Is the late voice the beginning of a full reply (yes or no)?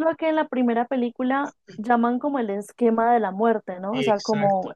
no